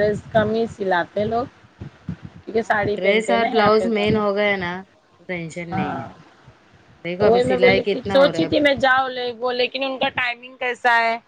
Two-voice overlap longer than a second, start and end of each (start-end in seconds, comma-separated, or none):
2.5-4.2